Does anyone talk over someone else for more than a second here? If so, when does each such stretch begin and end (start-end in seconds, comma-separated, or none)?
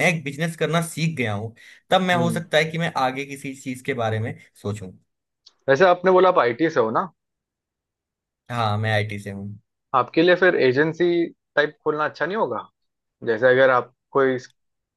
none